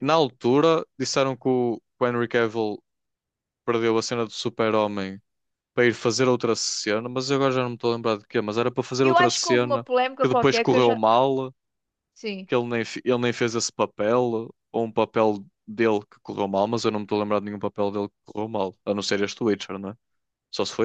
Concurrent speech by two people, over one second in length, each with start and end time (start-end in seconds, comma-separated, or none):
9.0-11.0